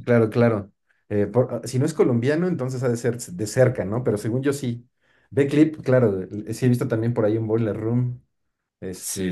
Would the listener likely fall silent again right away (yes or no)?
no